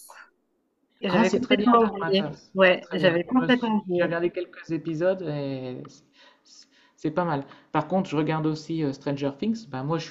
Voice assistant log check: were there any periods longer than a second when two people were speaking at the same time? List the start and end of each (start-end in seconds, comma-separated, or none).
1.1-4.1